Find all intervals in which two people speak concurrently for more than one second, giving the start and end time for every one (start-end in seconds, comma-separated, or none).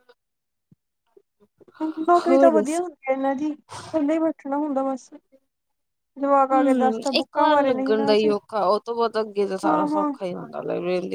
6.5-8.3